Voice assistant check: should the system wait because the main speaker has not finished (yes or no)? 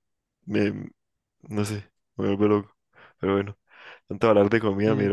yes